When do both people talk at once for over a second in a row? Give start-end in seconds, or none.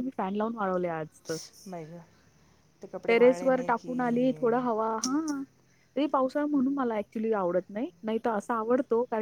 3.1-4.8